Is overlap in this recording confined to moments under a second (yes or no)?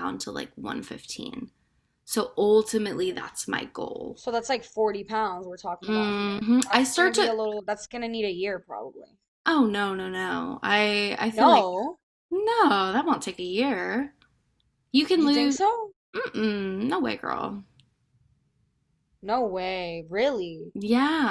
no